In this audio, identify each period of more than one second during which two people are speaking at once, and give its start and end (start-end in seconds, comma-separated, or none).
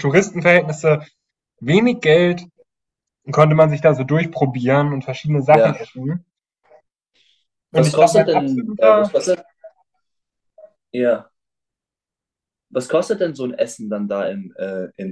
7.7-9.1